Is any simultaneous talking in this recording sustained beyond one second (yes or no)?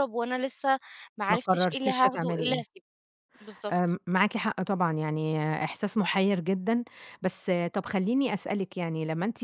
yes